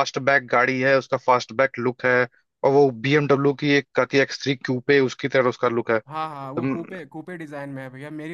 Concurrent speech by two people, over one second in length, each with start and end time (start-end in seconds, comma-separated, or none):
none